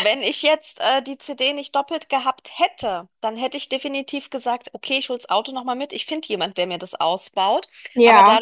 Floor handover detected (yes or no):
no